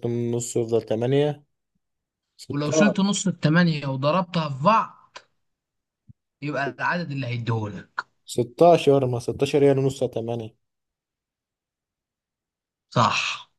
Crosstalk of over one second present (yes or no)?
no